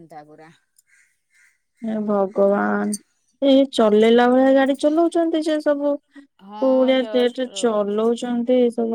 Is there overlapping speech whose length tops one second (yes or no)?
yes